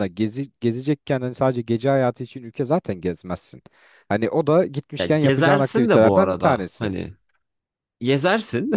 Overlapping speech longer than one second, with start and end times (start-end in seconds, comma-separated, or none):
5.0-6.9